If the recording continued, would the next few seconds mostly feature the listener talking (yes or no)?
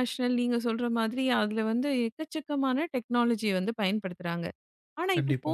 no